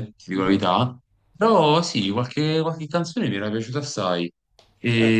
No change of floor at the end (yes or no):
yes